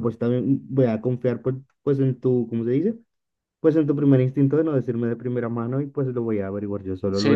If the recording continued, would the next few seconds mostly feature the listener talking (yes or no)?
yes